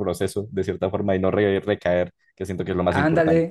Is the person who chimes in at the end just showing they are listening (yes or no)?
no